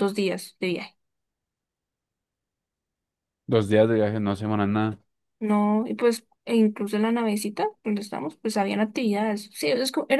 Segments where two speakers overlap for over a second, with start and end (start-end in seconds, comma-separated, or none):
none